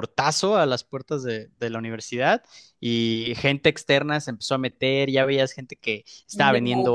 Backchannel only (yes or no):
yes